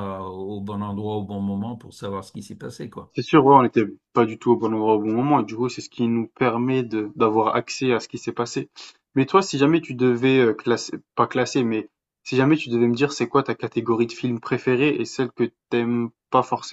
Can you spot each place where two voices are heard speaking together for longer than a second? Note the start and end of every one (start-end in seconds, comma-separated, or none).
none